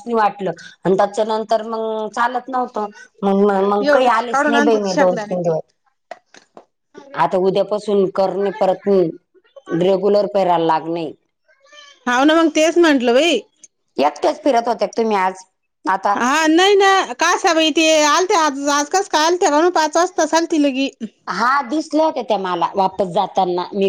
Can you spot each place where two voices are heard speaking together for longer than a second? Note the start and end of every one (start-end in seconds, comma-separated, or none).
3.8-5.5